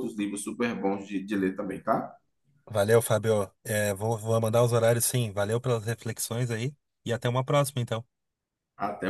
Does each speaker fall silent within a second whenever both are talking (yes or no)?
yes